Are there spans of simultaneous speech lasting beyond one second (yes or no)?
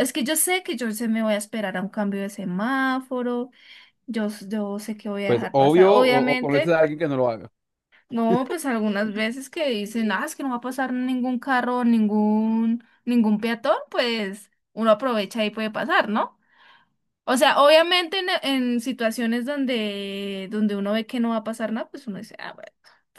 yes